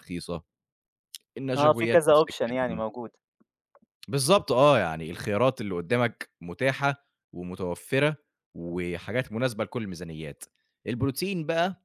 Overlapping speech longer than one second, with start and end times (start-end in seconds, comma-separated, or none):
1.6-2.8